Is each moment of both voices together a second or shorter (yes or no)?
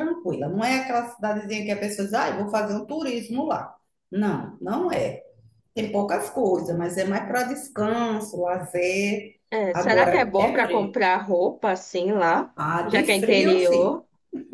no